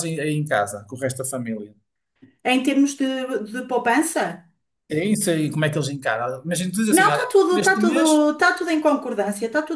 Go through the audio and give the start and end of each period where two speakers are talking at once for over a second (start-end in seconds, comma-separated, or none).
6.9-8.2